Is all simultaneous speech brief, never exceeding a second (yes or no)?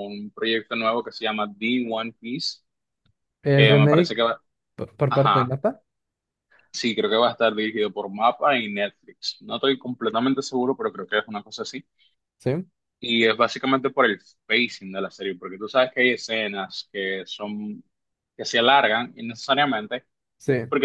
yes